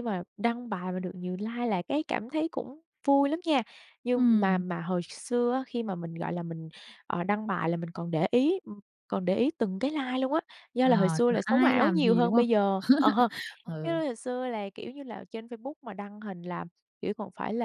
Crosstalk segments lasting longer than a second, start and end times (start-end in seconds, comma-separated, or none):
10.8-12.4